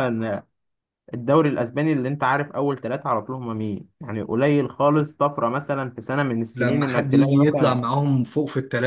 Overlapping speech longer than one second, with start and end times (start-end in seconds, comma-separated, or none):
6.5-7.8